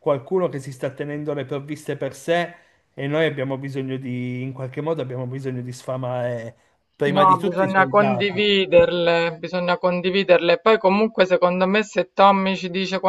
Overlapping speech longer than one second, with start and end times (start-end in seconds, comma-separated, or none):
7.1-8.5